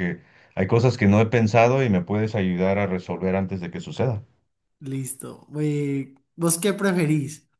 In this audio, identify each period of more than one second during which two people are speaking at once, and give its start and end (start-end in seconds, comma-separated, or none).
none